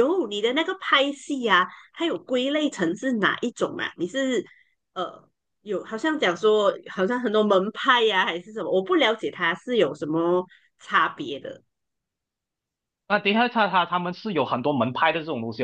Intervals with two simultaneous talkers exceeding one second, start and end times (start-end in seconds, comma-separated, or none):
none